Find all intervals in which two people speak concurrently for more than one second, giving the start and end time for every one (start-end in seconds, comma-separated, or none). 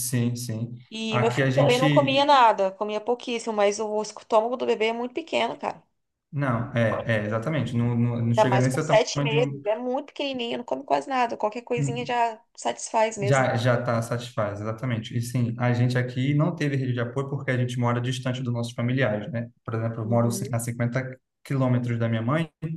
0.9-2.3, 8.3-9.7